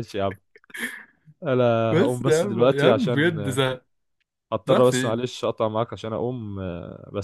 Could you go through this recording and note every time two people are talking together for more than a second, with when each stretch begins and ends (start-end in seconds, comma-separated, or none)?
1.9-3.6